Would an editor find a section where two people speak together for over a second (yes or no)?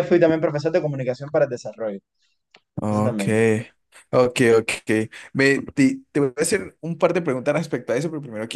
no